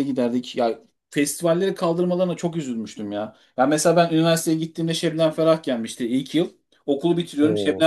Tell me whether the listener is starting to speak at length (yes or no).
no